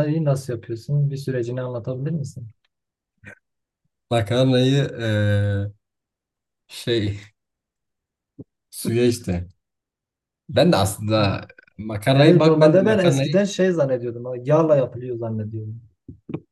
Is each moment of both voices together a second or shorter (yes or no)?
no